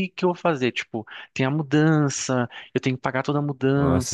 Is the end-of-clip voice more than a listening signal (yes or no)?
yes